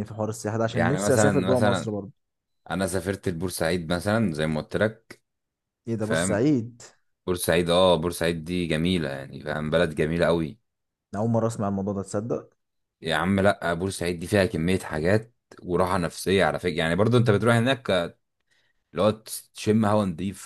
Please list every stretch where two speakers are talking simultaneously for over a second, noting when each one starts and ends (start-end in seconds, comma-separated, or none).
0.7-1.9